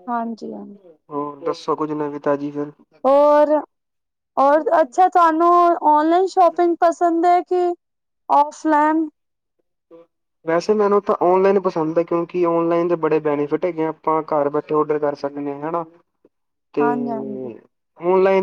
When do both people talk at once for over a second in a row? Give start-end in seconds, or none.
none